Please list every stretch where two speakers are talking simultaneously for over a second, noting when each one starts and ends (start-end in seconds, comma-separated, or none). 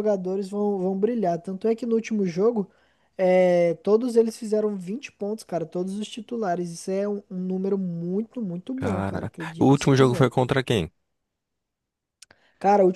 8.8-10.3